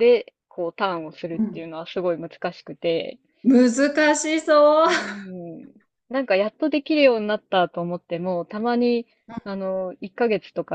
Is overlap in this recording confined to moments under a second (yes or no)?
yes